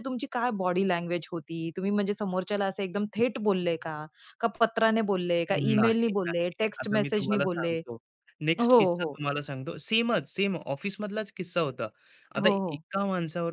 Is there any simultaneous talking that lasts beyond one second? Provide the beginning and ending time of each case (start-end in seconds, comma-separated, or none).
5.5-7.8